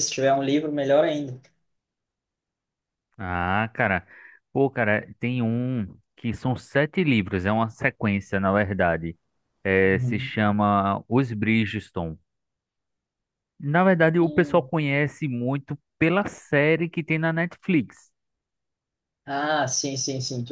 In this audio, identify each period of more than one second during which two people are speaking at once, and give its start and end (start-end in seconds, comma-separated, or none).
none